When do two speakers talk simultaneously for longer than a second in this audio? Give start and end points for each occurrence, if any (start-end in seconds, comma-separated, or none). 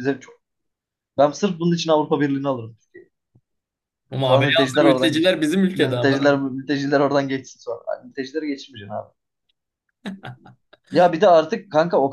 4.2-6.5